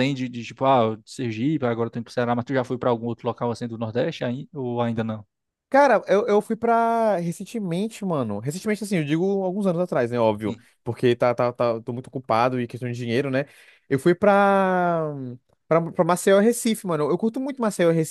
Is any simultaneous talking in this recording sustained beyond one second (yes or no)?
no